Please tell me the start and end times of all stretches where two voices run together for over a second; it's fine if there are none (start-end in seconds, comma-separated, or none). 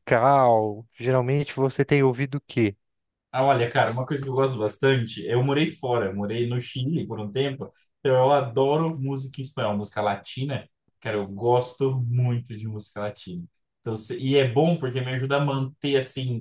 none